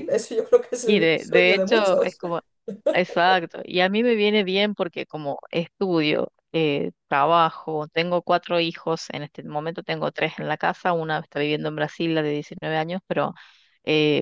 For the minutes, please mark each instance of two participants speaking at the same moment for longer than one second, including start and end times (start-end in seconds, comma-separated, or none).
0.8-2.2